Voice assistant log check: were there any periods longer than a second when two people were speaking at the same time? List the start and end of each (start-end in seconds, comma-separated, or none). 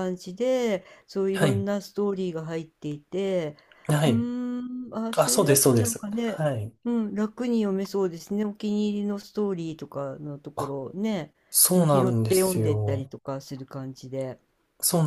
5.1-6.4, 11.7-13.1